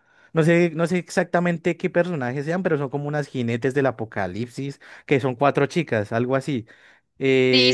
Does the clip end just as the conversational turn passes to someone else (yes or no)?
yes